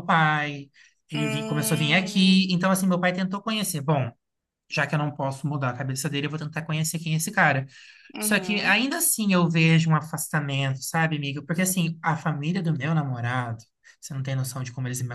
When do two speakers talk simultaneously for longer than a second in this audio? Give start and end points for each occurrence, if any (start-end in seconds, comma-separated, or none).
1.1-2.6